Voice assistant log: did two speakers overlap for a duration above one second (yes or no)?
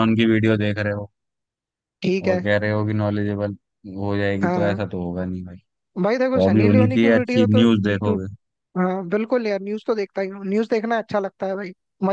yes